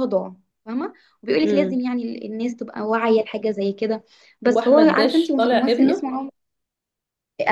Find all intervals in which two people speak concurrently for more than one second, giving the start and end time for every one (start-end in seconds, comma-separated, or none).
4.5-6.1